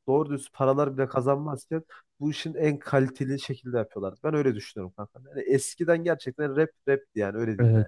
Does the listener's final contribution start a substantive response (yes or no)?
yes